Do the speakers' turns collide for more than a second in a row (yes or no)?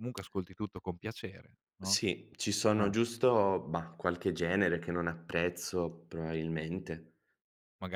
no